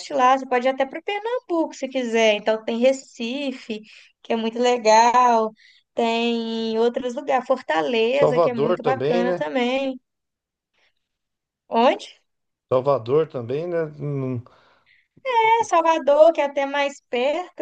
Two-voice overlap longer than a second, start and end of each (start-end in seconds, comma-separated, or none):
8.2-9.4